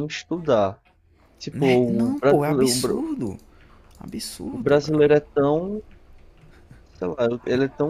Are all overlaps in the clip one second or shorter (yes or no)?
no